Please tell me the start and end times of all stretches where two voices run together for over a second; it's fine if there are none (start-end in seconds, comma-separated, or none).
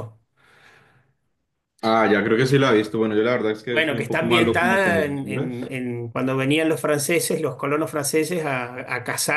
3.7-5.7